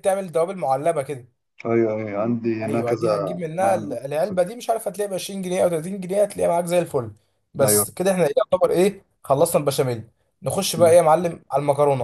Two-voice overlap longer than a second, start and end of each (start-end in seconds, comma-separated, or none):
2.6-4.0